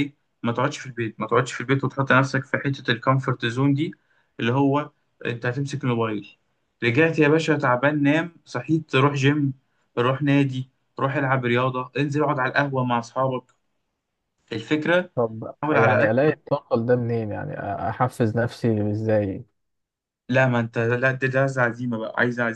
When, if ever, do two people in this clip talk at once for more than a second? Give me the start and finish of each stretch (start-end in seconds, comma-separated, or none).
none